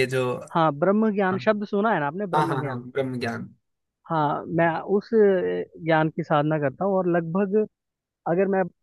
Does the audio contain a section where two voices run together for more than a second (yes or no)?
no